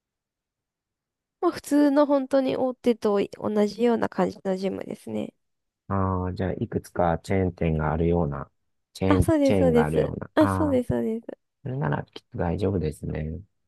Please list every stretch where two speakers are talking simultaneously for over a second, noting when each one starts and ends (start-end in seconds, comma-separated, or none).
9.1-10.8